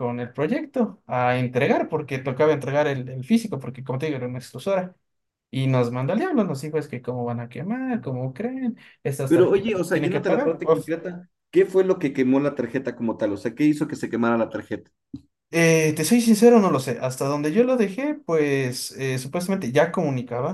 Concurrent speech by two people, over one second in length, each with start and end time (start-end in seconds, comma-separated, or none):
9.3-10.9